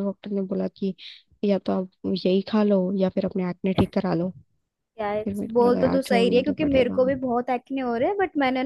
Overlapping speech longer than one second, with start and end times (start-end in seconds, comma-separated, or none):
5.2-7.0